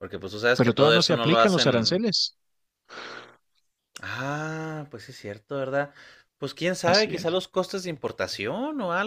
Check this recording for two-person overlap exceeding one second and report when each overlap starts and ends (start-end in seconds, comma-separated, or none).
0.6-2.0